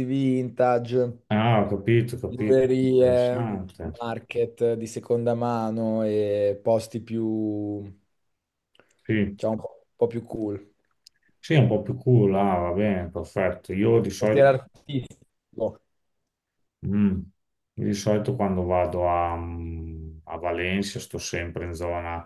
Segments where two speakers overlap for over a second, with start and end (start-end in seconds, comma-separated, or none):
2.3-3.6